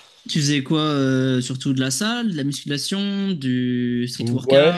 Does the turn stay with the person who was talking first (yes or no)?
no